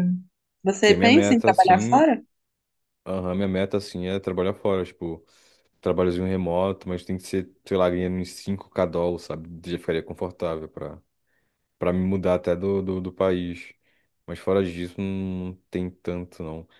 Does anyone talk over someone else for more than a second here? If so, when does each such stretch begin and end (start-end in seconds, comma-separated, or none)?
0.8-2.1